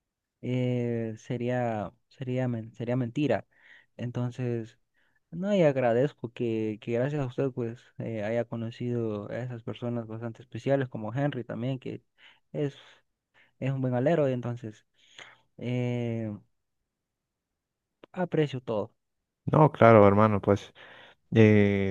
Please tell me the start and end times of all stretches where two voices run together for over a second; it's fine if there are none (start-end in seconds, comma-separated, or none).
none